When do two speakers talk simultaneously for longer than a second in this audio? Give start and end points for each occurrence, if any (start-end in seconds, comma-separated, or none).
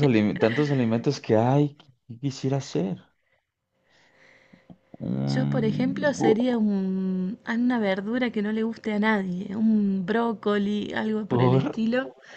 5.2-6.6